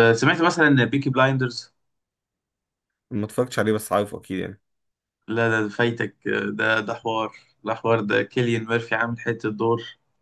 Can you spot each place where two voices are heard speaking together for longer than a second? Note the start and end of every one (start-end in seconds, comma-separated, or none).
none